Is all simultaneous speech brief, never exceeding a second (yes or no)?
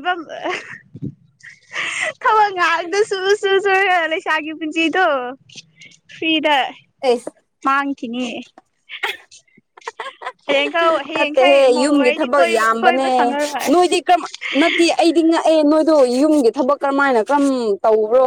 no